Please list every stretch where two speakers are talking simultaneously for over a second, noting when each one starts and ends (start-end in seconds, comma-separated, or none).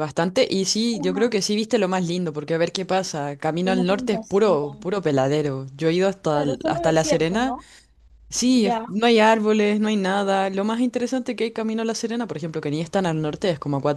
3.6-4.9, 6.3-7.6